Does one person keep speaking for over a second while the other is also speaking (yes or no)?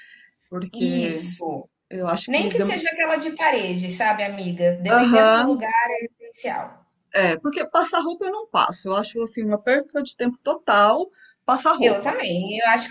no